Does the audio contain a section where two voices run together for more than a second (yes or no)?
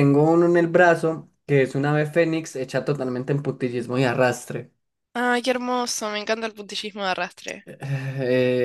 no